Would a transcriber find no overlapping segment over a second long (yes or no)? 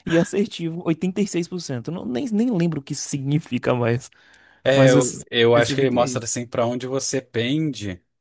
no